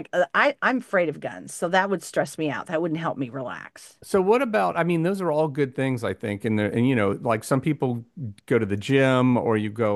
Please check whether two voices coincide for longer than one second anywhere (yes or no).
no